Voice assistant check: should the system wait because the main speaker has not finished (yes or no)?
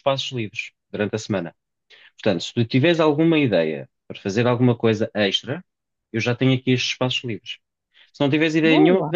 yes